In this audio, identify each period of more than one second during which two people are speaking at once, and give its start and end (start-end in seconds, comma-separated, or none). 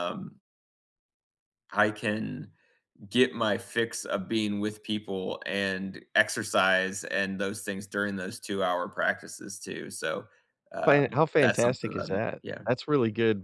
10.8-12.6